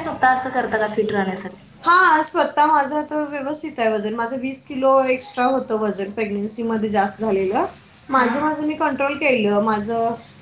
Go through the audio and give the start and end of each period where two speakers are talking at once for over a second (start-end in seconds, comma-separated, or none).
none